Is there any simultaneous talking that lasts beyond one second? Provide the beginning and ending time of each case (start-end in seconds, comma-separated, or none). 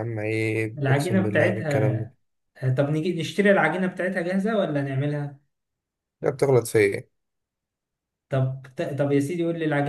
0.8-2.1